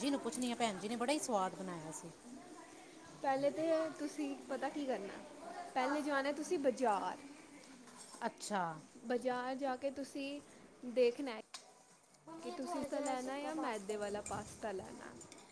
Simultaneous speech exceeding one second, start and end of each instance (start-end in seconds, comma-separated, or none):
12.4-14.3